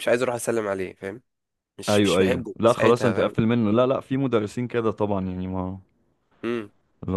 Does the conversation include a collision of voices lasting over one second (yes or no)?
yes